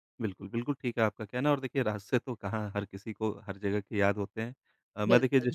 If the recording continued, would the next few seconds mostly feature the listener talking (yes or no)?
no